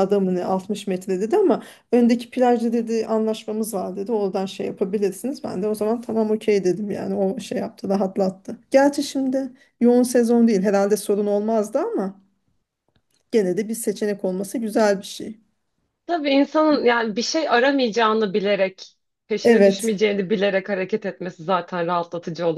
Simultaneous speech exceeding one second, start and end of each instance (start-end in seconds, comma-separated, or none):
none